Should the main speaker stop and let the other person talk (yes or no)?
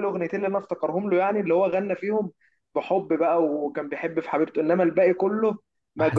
no